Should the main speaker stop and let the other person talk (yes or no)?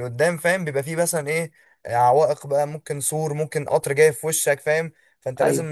no